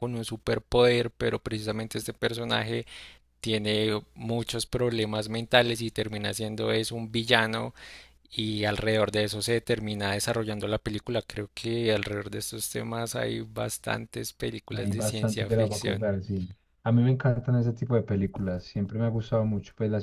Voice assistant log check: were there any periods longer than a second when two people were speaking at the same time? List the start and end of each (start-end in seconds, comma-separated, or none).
14.7-16.1